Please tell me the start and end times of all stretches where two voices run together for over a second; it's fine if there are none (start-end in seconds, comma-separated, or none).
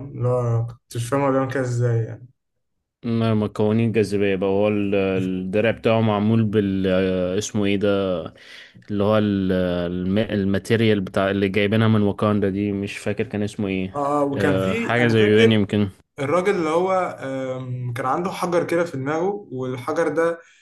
14.3-15.6